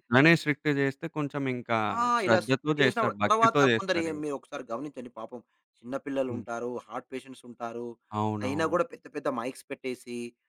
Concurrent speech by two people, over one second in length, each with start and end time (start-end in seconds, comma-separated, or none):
2.2-4.2